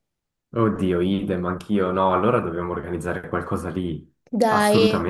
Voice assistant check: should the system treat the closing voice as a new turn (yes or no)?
yes